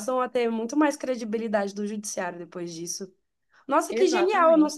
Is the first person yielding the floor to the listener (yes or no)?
no